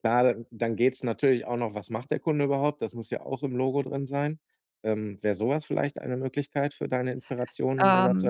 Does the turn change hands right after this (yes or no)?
yes